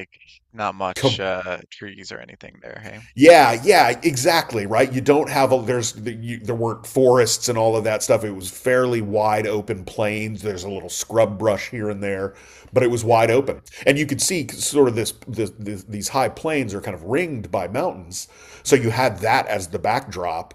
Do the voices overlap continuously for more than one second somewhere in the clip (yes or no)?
no